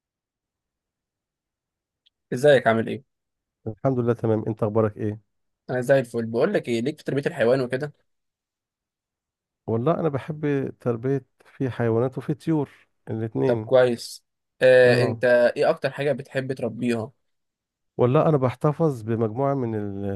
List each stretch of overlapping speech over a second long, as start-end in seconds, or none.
none